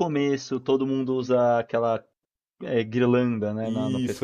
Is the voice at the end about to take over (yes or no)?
yes